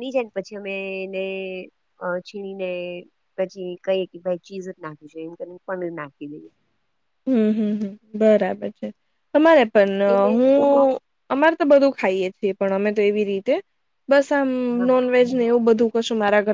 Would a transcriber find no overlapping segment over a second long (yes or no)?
yes